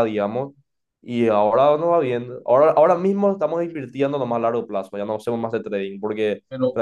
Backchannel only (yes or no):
yes